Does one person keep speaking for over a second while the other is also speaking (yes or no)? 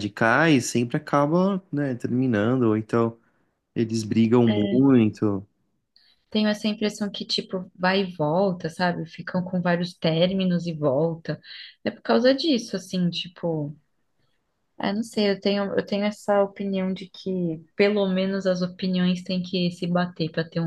no